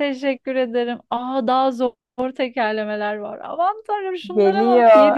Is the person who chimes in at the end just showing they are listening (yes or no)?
no